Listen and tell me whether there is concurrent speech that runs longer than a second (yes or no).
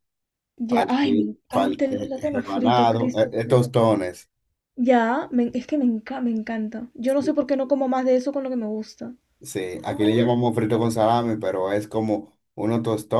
yes